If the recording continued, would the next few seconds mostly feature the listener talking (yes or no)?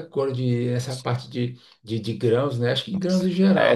yes